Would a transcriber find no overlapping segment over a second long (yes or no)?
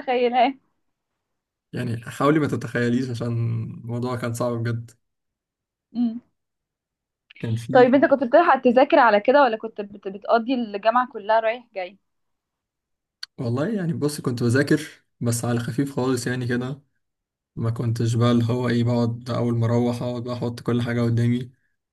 yes